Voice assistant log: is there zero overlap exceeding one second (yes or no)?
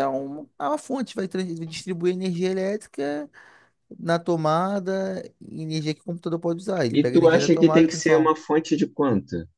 no